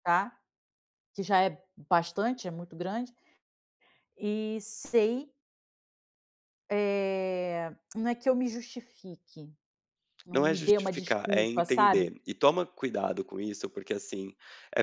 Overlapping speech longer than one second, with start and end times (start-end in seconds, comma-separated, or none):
10.3-12.1